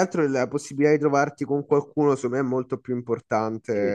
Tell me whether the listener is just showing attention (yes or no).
no